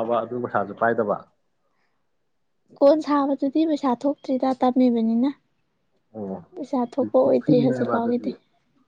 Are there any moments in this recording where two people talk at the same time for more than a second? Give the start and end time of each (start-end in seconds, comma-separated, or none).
6.5-8.3